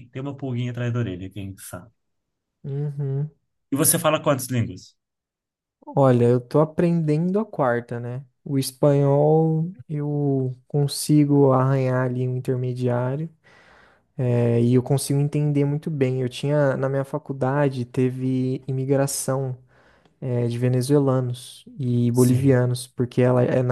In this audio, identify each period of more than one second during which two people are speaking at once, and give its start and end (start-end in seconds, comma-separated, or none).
none